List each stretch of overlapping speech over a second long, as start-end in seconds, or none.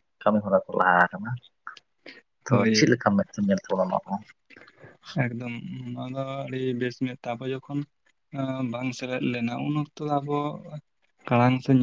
none